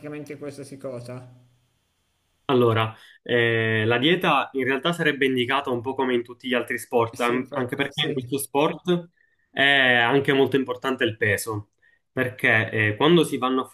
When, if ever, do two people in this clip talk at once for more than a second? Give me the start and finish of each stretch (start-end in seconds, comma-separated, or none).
7.1-8.3